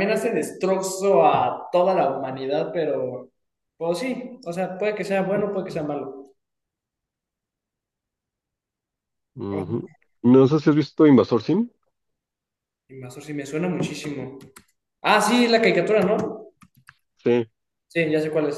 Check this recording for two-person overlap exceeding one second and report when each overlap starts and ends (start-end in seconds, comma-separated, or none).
none